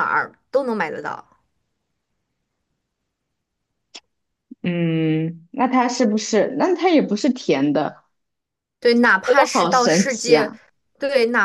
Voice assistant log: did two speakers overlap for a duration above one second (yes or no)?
yes